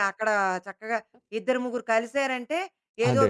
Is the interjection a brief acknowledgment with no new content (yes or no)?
yes